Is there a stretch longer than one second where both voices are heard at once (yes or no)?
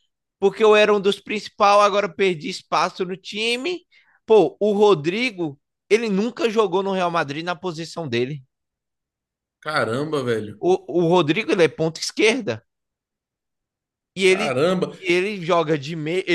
no